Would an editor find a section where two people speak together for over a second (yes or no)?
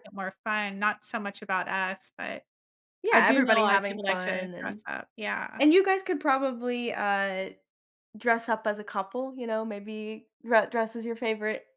yes